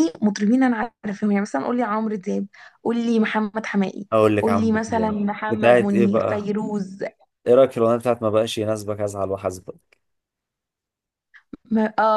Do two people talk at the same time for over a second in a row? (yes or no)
yes